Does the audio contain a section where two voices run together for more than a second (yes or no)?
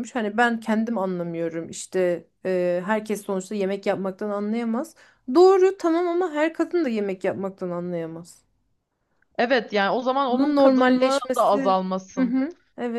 yes